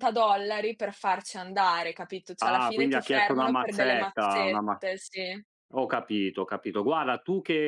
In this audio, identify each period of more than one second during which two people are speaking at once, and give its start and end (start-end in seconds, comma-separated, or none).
2.4-4.8